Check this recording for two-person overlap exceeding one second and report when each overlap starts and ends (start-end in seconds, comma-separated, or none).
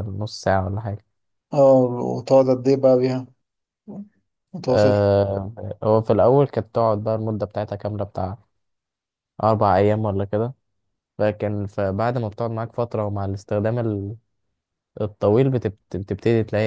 none